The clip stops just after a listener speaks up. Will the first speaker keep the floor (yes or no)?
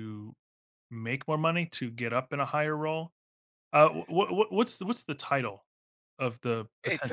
no